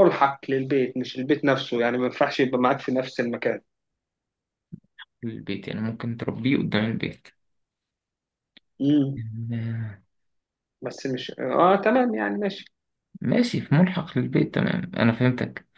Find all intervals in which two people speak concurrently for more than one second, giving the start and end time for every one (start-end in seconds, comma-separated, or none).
none